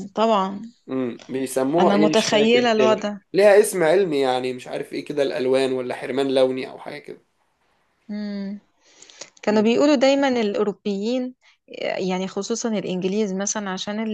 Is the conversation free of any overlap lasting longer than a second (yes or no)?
no